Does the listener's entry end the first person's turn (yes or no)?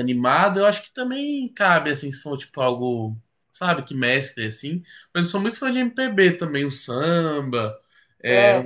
no